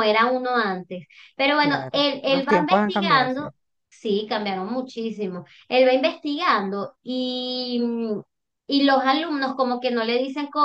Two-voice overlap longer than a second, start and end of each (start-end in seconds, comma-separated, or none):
1.6-3.4